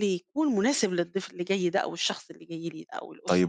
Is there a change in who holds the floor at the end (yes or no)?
yes